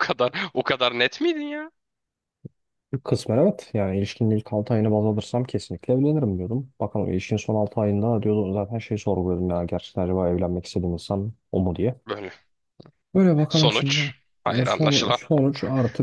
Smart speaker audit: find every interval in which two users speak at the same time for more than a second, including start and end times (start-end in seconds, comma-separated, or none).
13.5-15.2